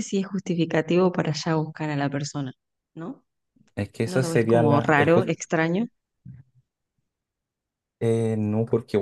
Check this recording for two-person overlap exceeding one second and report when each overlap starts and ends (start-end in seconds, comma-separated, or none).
4.0-5.3